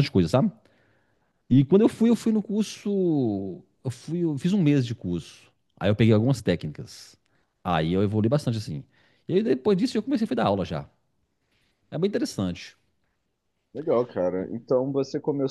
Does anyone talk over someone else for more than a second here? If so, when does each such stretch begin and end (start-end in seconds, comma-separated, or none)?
none